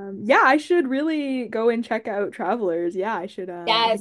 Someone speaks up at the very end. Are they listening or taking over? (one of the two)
taking over